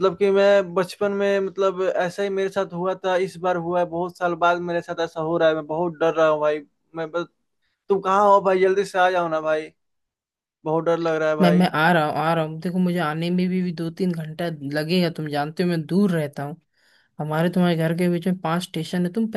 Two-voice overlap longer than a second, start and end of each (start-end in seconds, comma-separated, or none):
none